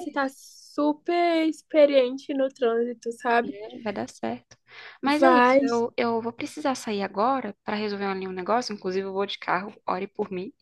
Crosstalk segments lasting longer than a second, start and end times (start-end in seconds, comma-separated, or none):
none